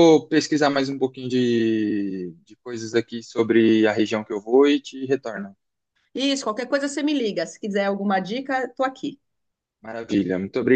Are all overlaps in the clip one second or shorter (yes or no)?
yes